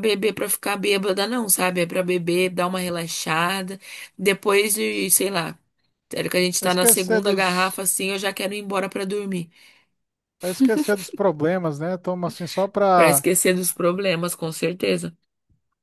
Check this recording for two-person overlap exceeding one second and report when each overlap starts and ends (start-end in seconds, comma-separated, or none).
6.6-7.8